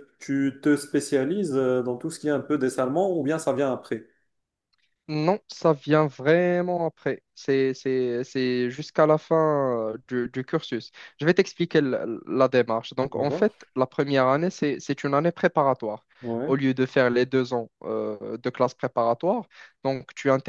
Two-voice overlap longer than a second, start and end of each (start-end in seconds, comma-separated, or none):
none